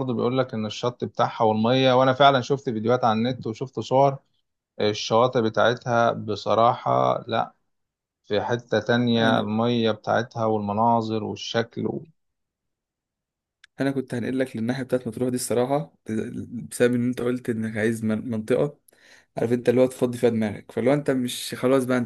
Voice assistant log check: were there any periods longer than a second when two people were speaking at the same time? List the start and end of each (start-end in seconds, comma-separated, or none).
none